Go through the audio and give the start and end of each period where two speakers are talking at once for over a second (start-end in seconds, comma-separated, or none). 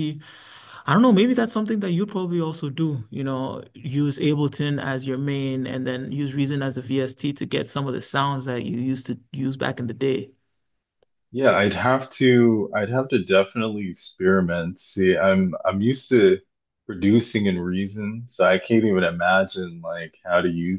none